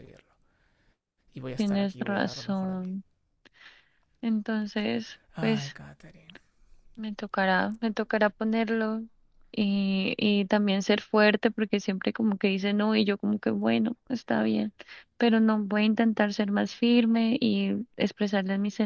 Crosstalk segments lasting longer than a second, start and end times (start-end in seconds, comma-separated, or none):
1.6-2.9